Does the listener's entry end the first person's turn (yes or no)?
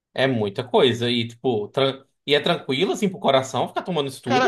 yes